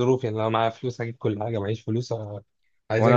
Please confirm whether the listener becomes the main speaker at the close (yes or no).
yes